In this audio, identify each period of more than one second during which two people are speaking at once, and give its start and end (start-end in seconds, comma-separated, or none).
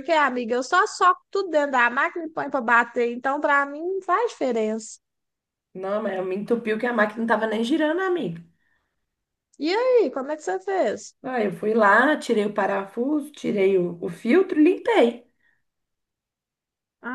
none